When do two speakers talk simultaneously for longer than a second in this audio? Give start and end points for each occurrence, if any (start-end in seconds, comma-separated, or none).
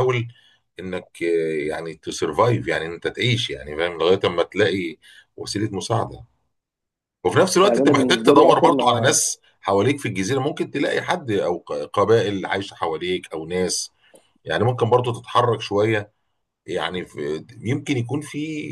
7.6-9.2